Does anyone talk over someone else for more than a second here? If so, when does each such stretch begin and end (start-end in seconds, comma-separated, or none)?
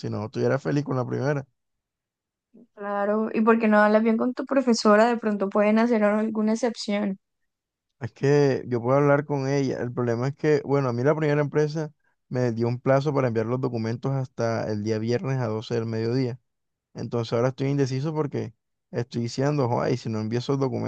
none